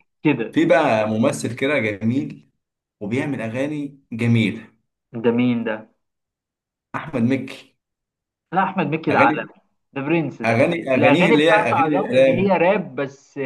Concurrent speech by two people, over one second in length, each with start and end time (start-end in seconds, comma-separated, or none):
10.4-12.6